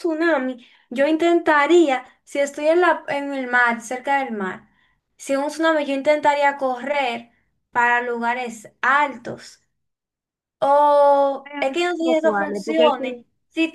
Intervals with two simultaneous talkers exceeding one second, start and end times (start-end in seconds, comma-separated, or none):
11.4-13.2